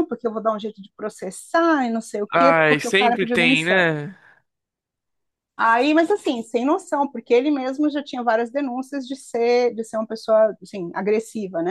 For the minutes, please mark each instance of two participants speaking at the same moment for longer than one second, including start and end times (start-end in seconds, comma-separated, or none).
2.3-3.9